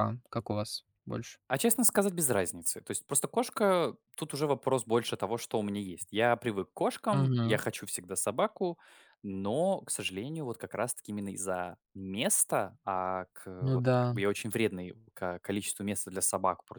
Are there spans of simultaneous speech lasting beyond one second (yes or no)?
no